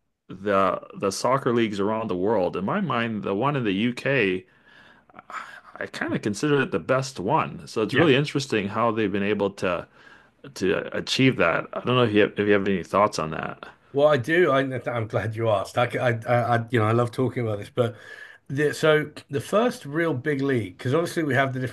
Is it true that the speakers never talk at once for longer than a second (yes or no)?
yes